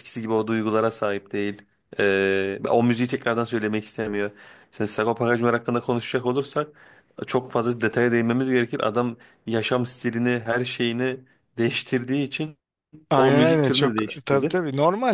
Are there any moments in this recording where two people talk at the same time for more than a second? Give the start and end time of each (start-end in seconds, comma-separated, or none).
13.2-14.6